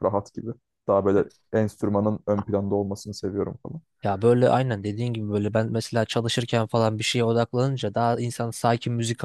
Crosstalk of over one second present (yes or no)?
no